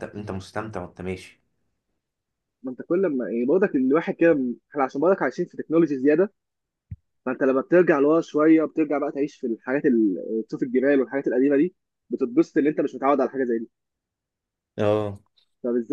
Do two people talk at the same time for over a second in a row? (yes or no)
no